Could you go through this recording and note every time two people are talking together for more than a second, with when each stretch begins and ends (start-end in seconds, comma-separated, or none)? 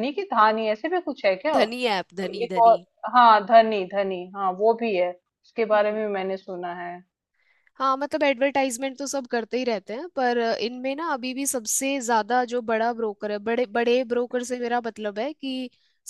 none